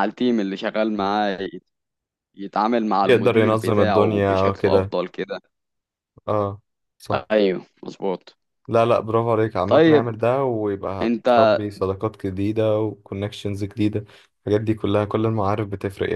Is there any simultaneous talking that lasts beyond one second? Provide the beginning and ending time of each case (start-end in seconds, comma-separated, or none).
3.0-4.9